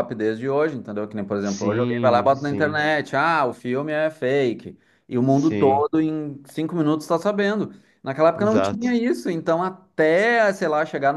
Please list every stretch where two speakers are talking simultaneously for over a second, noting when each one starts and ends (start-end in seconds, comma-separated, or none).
1.4-2.9